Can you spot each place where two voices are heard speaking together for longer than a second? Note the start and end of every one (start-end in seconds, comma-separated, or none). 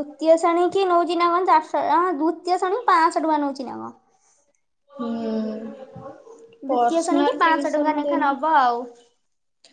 6.7-8.4